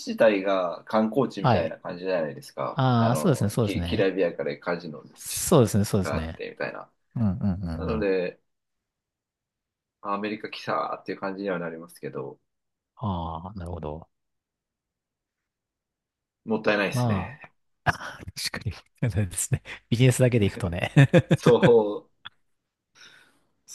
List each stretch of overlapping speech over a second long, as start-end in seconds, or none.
2.7-4.1